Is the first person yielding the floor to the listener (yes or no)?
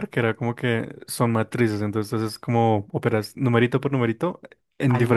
yes